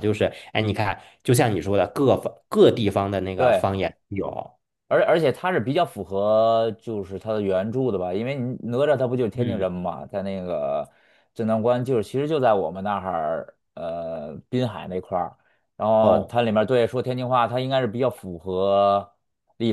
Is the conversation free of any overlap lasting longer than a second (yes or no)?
yes